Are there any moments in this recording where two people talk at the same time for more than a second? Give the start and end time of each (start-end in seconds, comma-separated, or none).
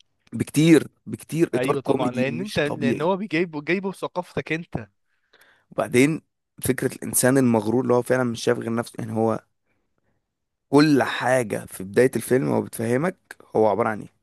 1.5-3.1